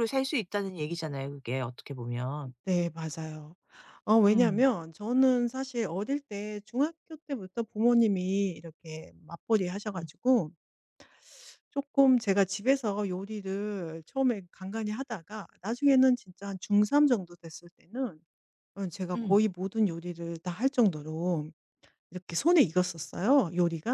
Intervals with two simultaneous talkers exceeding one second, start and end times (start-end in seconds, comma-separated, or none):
none